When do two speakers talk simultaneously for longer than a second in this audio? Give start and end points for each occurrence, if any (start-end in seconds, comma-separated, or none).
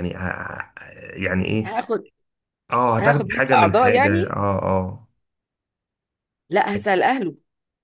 3.0-4.4